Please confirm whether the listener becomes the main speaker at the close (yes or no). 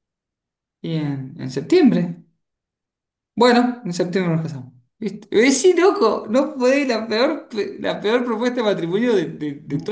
yes